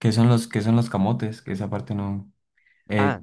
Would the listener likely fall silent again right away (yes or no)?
no